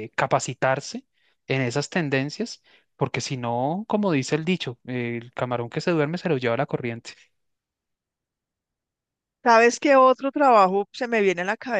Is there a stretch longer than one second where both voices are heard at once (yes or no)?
no